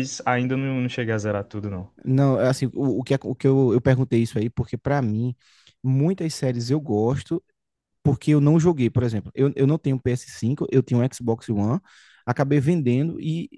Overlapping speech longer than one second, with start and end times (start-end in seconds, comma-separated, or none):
none